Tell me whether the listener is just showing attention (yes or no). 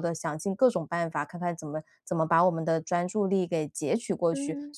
yes